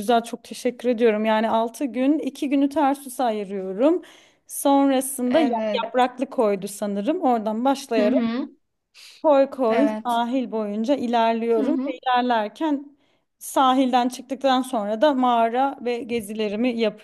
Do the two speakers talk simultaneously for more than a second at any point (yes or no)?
no